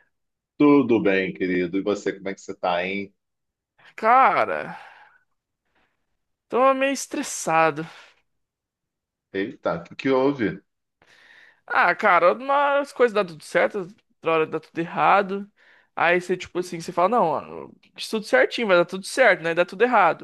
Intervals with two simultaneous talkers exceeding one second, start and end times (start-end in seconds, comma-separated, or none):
none